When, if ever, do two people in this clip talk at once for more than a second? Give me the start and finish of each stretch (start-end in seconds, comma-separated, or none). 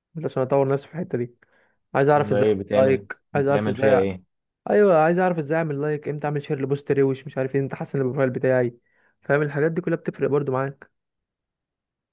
2.1-4.0